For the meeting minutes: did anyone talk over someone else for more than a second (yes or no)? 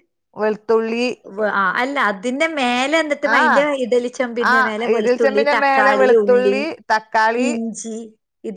yes